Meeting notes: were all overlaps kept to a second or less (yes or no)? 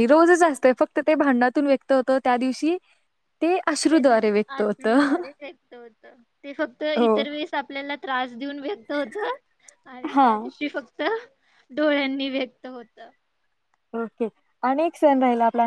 no